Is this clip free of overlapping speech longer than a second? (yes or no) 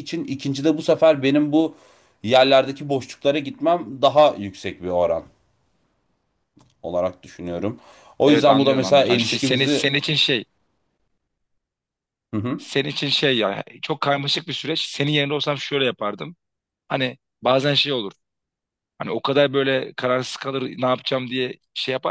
no